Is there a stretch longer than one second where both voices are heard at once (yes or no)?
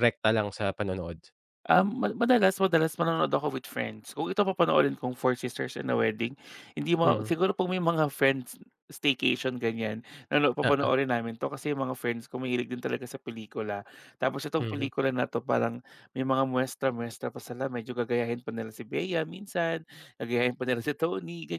no